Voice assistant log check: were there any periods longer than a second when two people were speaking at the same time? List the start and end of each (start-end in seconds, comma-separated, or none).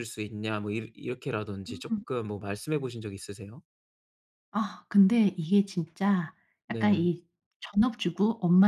none